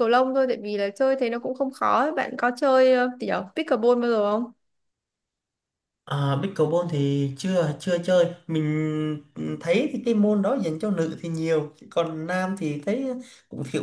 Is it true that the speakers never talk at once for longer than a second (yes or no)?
yes